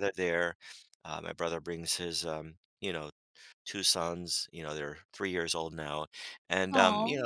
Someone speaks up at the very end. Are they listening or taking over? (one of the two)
listening